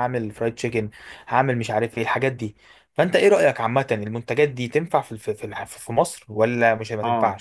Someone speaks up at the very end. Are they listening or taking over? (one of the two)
taking over